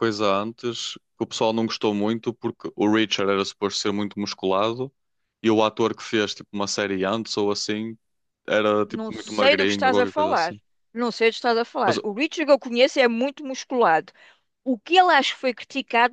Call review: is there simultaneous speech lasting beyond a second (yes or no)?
yes